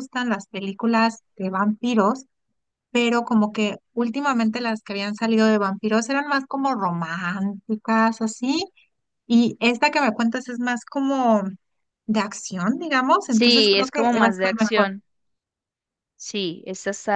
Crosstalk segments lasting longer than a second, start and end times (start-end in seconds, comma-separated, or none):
13.3-14.9